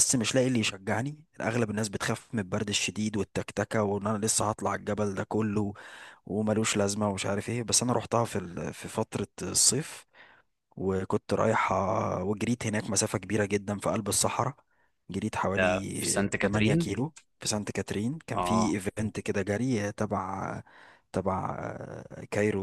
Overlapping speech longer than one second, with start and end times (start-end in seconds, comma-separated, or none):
15.5-16.9